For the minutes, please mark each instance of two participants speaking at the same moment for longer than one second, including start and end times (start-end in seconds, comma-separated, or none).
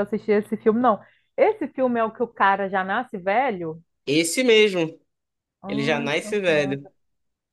5.7-6.9